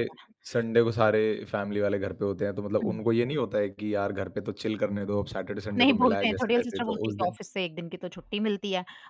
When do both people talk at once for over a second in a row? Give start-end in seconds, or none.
5.8-7.4